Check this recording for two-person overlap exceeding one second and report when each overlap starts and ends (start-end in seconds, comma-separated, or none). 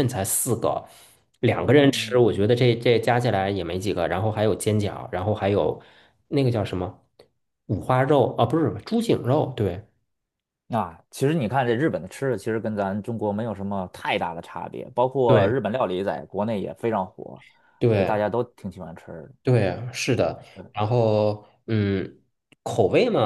none